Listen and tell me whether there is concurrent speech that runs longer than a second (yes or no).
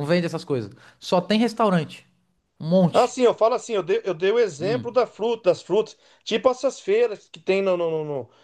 no